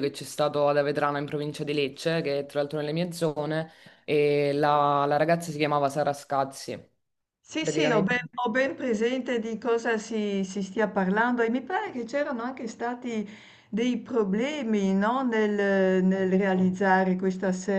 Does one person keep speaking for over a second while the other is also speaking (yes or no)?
no